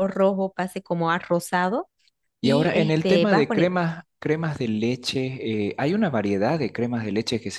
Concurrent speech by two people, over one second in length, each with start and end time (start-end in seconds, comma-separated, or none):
2.4-3.8